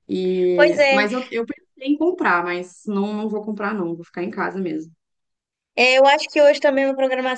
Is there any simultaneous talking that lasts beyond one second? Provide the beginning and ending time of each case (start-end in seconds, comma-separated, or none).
none